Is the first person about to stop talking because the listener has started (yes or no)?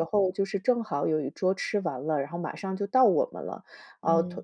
no